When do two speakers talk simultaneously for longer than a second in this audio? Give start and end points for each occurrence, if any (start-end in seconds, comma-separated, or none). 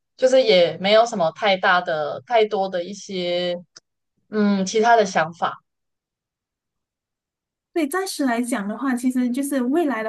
none